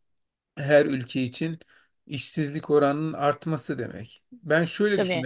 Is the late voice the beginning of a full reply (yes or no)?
no